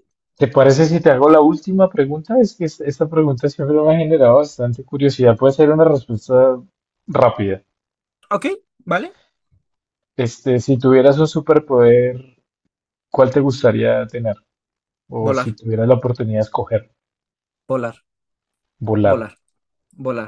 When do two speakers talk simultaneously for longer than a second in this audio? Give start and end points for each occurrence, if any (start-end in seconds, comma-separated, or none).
none